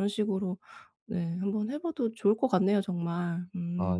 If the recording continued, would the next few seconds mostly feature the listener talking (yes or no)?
yes